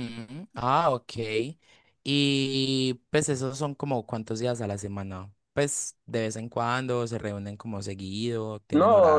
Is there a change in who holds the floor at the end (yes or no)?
yes